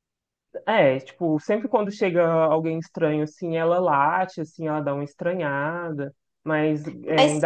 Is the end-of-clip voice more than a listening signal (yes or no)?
no